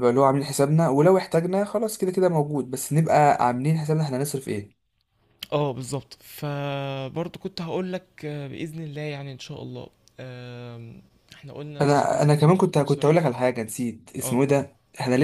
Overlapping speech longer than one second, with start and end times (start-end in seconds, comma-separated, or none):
11.8-13.3